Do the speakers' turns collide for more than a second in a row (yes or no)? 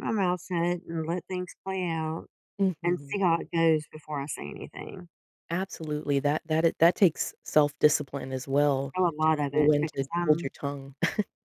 yes